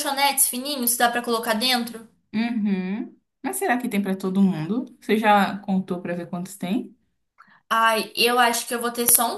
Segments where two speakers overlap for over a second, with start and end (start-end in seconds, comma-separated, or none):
none